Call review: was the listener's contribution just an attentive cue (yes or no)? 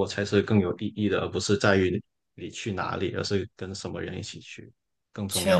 no